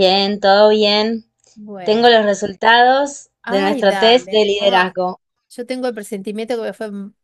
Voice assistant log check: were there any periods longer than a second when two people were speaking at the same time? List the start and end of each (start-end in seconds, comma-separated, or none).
3.4-4.9